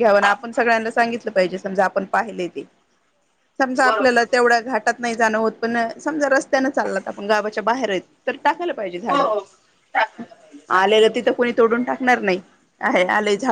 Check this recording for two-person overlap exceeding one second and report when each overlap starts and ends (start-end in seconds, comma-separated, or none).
3.8-5.1